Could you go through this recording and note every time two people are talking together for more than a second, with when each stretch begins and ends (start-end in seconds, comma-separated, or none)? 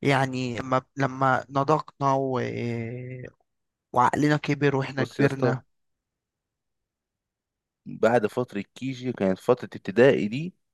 none